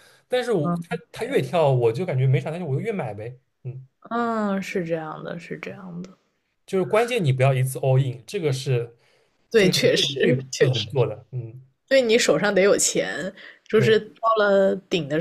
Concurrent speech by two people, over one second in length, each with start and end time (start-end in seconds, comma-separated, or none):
9.6-10.9